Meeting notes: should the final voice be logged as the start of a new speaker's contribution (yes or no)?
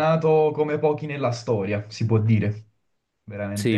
yes